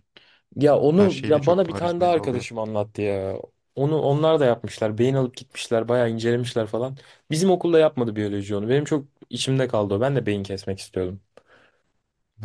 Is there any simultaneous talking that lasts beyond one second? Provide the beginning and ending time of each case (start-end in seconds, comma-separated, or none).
0.9-2.5